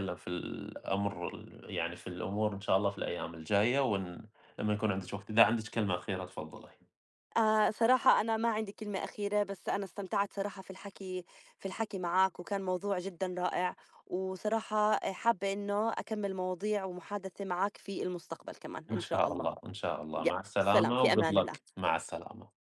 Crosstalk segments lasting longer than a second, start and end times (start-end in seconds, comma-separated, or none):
20.2-21.6